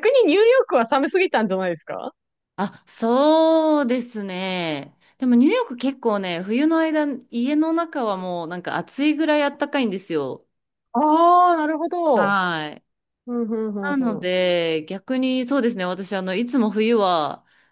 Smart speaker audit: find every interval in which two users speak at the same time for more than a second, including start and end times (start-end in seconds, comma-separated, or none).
none